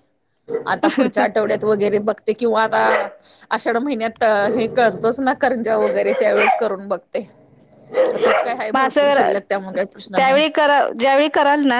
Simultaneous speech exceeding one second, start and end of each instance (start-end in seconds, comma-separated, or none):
8.7-10.4